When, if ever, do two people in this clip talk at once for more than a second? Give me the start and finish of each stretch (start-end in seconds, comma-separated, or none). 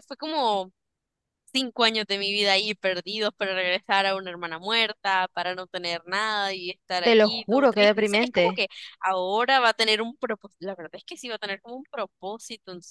7.0-8.6